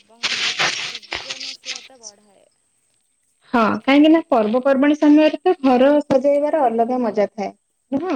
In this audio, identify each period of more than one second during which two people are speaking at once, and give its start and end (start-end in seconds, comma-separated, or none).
none